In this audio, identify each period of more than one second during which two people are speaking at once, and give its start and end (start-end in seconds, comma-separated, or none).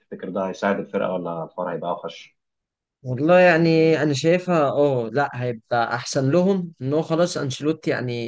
none